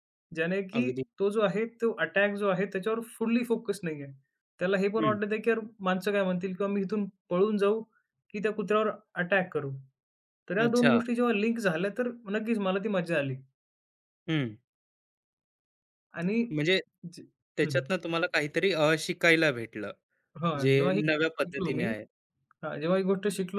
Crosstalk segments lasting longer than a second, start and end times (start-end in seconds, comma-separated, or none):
20.6-21.8